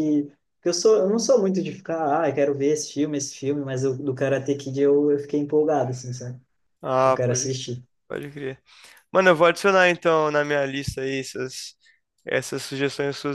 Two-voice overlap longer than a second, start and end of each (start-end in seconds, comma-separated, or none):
none